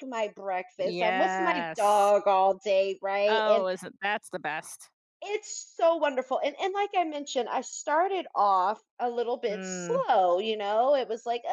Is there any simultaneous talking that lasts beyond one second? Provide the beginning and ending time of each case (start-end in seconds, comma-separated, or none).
0.8-2.1